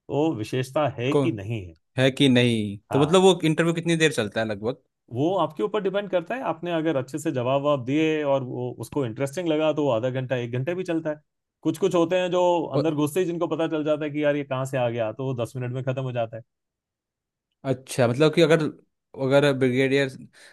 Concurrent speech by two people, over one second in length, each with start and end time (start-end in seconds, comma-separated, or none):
none